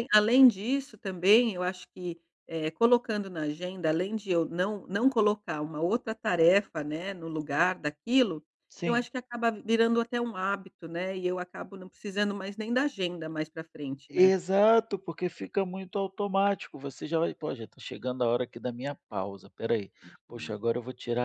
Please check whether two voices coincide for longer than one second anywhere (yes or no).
no